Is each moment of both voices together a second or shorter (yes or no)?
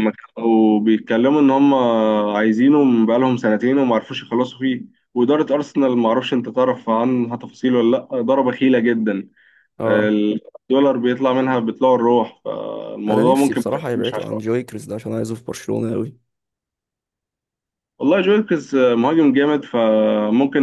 no